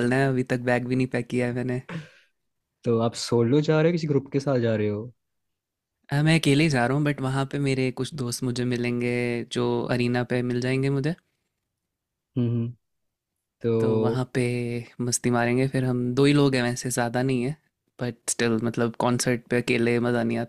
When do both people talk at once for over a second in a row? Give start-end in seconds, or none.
none